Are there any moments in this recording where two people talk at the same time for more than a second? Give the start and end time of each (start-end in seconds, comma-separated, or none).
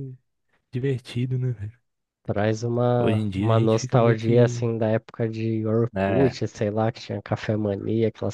3.0-4.7